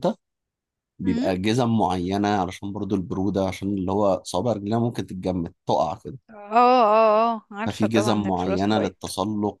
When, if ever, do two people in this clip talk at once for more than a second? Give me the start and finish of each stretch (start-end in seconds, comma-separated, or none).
7.7-9.1